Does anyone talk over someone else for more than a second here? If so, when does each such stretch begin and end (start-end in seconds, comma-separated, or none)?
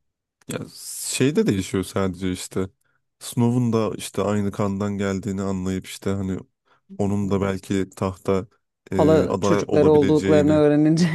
8.9-10.6